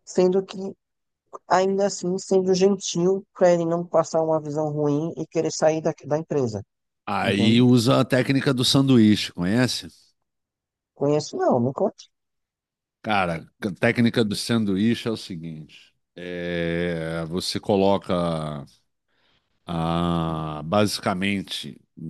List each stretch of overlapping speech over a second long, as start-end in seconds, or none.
none